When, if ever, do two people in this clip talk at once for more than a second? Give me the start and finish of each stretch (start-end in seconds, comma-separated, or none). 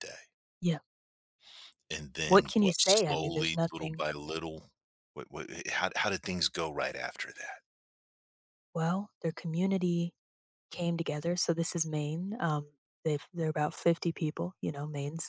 2.2-4.0